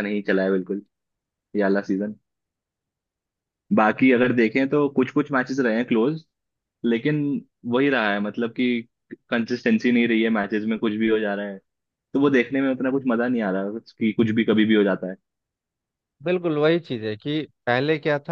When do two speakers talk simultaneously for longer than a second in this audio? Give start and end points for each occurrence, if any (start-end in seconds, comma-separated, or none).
none